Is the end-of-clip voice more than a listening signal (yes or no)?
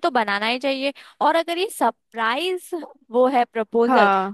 no